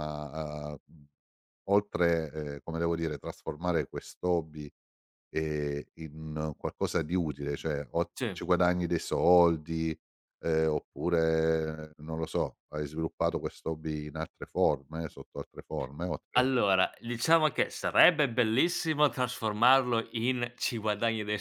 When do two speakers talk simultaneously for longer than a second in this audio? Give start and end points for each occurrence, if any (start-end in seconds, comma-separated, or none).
none